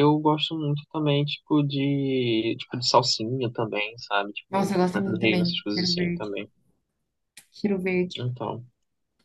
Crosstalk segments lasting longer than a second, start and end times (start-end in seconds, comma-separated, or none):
4.5-6.3